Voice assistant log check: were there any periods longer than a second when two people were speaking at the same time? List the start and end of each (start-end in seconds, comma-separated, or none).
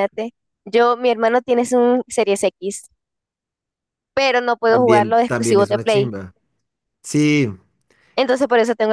4.7-6.1